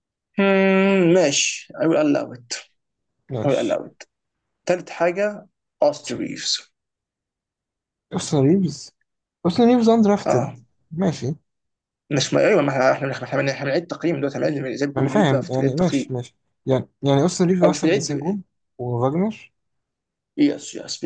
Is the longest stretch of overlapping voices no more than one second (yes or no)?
no